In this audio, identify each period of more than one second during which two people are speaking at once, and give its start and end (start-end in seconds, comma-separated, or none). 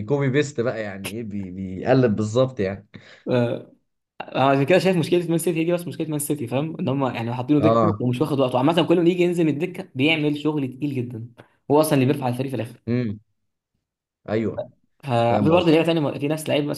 none